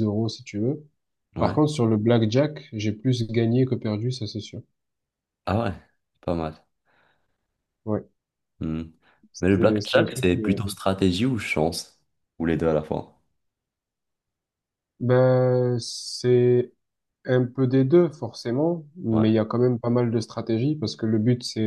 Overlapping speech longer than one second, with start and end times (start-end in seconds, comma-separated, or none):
9.4-10.6